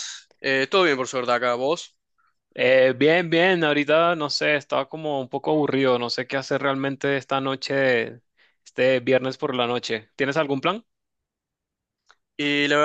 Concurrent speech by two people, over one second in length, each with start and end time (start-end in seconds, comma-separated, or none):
none